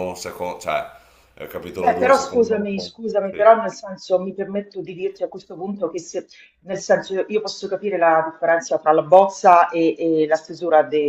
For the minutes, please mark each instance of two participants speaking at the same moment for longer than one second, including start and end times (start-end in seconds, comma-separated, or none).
1.7-3.5